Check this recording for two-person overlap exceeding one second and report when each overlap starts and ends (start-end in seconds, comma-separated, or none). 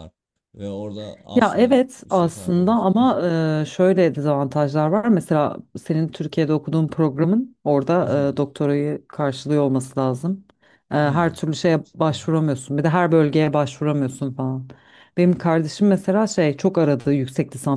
1.4-2.9